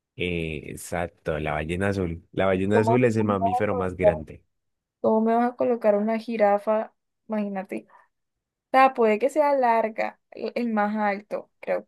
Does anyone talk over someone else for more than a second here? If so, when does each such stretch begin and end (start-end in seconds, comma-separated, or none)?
2.7-4.2